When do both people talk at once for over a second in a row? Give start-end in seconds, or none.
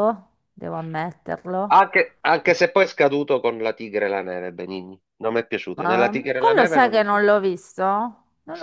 5.8-7.3